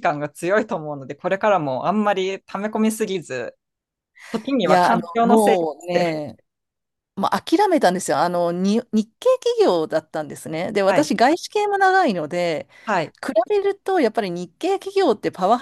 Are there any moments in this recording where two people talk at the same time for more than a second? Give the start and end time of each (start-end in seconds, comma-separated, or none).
4.6-6.2